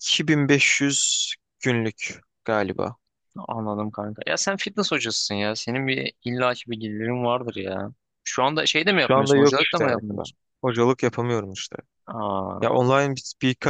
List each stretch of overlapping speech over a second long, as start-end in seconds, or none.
8.9-10.4